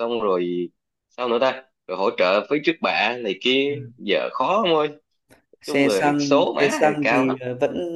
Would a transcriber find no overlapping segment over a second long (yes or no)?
no